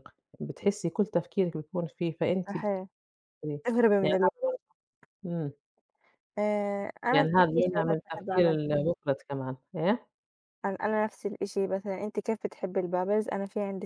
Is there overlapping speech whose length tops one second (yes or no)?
yes